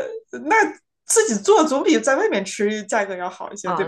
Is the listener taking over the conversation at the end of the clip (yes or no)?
yes